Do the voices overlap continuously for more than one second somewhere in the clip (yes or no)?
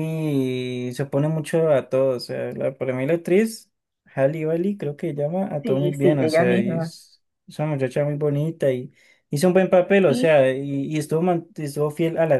yes